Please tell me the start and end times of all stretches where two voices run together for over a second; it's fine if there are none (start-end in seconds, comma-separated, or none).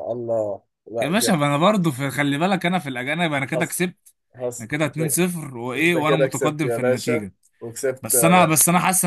5.8-7.2